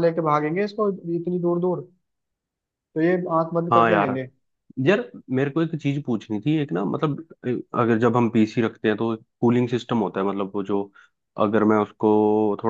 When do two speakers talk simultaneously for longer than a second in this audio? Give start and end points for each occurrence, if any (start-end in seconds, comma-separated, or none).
none